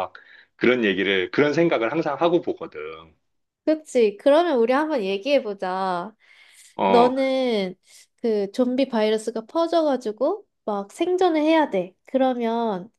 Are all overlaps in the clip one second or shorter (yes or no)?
yes